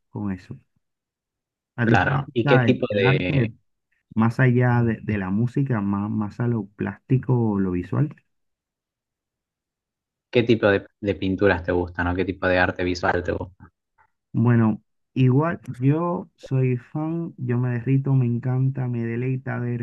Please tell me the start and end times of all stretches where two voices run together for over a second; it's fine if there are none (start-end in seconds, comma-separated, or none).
1.8-3.5